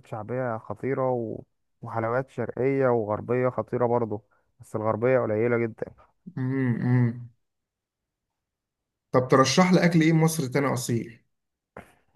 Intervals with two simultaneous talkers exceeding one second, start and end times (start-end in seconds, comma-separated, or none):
none